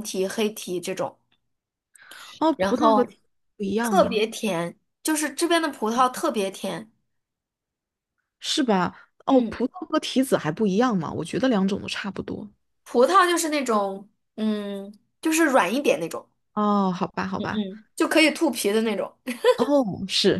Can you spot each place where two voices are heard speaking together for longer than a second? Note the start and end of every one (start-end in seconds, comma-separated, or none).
none